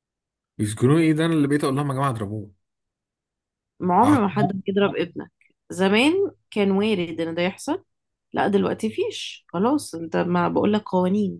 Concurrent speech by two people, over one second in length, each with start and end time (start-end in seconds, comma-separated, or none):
none